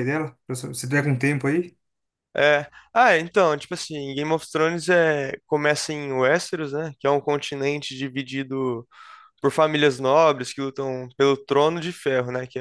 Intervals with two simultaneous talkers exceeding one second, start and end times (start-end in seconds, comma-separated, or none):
none